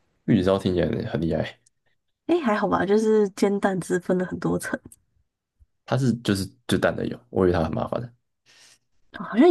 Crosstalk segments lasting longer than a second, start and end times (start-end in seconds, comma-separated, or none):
none